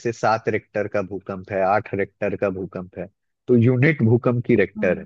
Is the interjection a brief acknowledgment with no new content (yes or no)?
yes